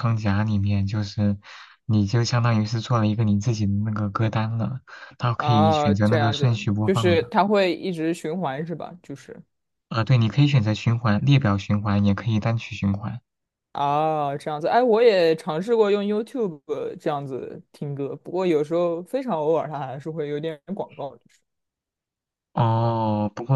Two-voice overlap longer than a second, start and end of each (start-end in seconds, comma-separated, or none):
5.3-7.3